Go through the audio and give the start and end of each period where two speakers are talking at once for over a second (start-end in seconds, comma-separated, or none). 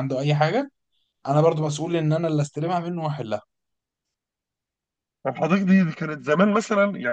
none